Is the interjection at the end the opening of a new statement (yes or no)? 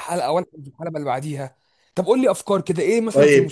yes